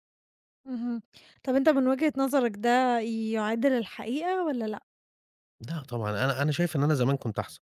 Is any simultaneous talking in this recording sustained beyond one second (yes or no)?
no